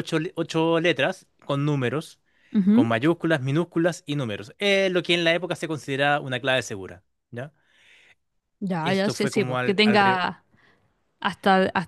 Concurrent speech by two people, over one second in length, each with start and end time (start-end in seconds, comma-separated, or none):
8.8-10.3